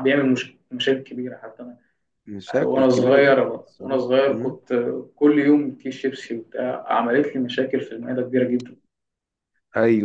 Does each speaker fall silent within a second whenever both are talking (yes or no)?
no